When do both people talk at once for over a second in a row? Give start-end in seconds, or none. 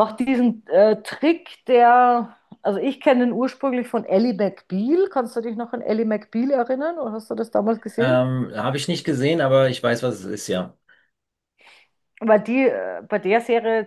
none